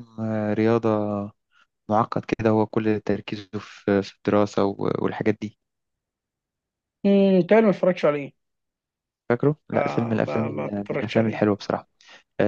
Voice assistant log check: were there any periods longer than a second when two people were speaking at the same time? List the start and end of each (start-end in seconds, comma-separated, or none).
9.7-11.4